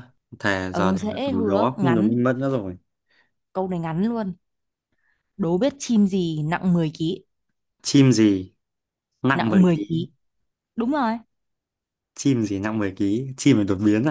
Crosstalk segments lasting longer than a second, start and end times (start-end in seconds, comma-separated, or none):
0.7-2.1